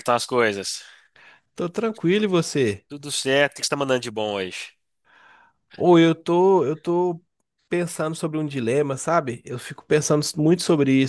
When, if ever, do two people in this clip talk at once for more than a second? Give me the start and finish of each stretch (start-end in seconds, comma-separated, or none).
none